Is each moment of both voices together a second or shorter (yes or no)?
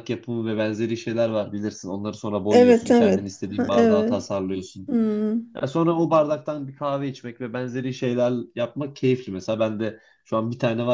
no